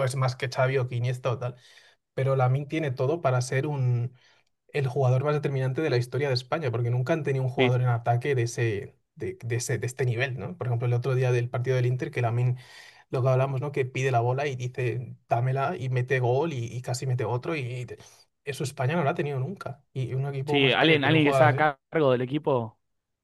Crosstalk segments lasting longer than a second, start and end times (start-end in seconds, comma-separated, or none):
20.4-21.7